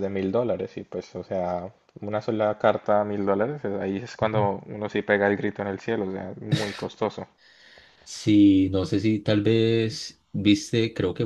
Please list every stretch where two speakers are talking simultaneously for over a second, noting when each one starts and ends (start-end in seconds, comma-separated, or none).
none